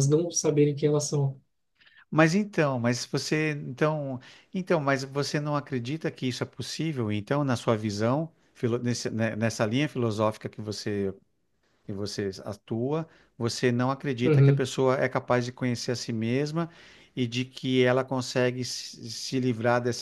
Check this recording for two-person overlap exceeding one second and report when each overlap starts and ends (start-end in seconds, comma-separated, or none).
none